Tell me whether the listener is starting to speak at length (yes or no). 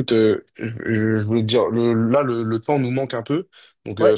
no